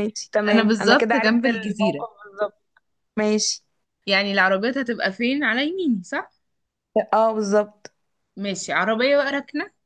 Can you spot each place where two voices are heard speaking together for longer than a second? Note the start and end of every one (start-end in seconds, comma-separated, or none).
0.5-2.0